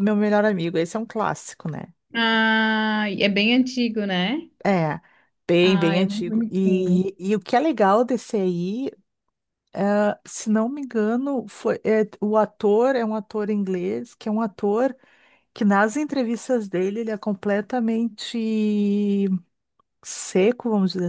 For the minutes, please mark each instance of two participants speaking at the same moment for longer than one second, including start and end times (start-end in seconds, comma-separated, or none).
5.6-7.1